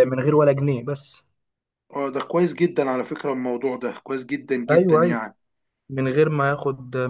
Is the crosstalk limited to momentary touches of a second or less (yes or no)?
yes